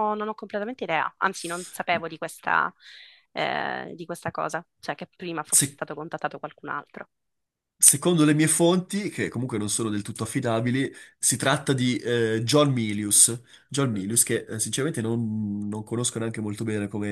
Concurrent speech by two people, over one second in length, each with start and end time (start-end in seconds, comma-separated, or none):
none